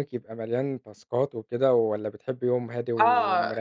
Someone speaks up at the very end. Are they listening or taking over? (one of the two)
taking over